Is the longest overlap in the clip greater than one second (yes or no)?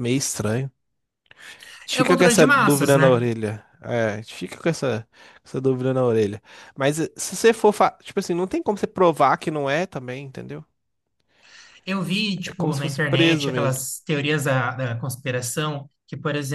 yes